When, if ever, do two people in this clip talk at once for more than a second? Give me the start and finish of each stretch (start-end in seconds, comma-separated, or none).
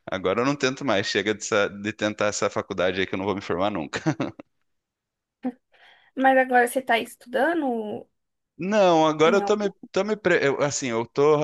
none